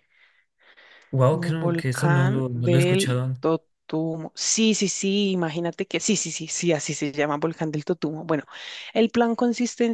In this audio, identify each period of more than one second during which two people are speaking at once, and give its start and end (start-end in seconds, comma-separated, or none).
1.3-3.4